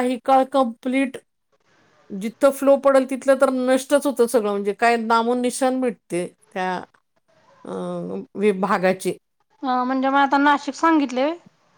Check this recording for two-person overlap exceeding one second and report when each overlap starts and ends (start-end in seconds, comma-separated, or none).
none